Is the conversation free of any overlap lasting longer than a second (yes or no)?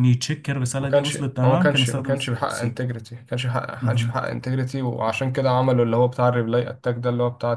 no